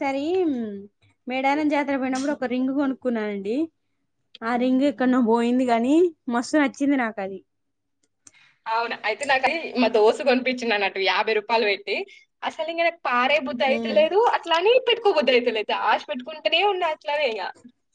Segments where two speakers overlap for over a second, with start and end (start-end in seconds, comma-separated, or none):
none